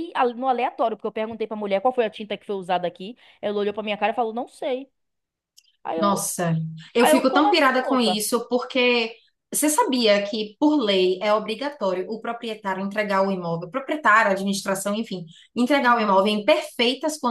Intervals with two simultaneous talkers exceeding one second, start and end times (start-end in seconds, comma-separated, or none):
7.0-8.2